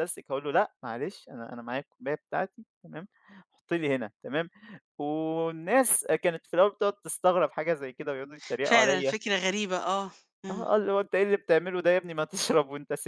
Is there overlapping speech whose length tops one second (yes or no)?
no